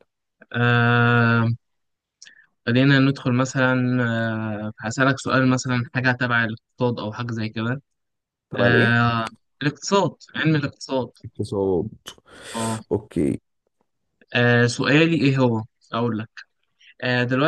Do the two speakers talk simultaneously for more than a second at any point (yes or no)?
no